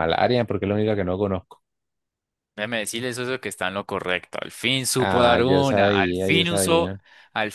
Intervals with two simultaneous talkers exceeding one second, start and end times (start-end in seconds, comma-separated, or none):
5.0-6.9